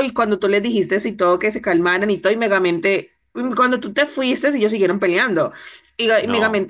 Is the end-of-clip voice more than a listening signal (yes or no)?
no